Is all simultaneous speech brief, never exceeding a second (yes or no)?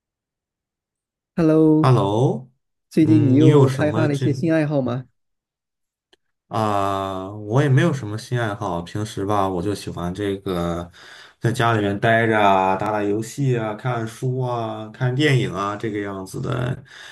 no